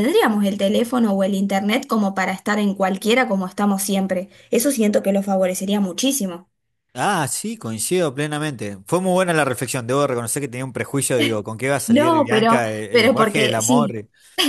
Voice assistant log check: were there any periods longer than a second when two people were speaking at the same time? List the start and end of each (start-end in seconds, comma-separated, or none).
11.9-13.9